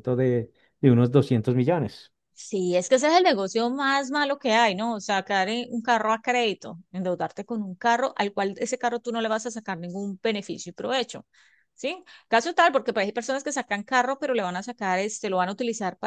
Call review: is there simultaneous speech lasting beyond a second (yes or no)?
no